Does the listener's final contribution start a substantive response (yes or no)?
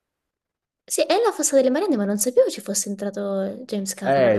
yes